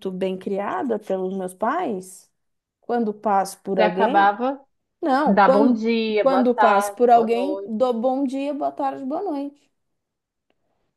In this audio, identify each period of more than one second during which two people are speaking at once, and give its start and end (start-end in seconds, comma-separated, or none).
5.3-7.7